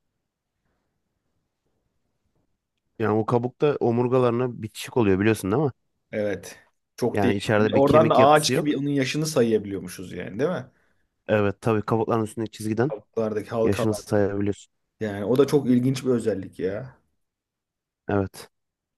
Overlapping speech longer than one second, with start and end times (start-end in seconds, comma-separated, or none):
7.1-8.7